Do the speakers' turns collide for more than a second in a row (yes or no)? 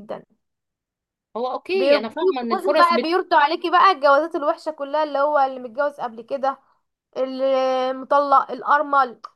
yes